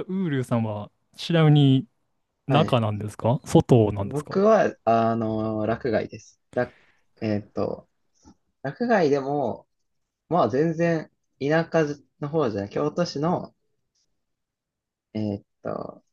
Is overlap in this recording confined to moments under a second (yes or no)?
yes